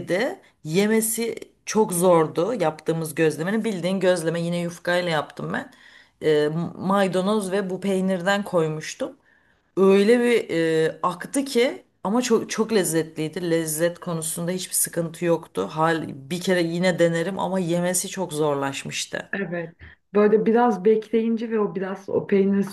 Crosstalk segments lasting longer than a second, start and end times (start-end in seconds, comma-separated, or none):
none